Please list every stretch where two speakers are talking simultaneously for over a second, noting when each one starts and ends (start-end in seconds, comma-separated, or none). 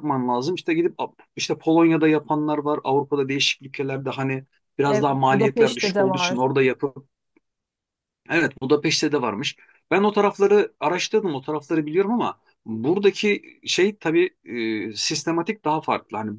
4.8-6.4